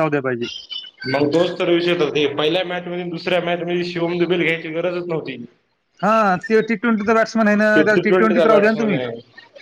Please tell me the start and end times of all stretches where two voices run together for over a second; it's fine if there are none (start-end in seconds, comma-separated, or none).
7.7-9.0